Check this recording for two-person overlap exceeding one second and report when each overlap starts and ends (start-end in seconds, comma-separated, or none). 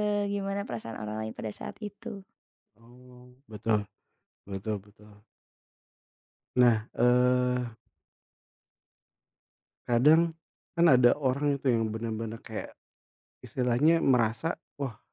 none